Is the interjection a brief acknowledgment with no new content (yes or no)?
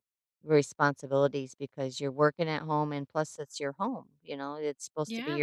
yes